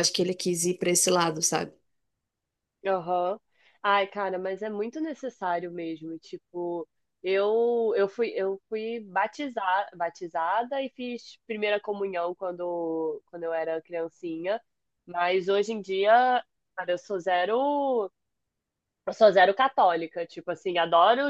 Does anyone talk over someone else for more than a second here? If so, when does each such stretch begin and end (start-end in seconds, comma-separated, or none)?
none